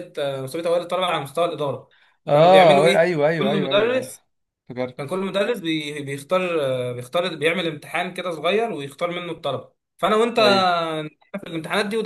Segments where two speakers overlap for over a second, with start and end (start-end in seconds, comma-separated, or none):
2.3-4.1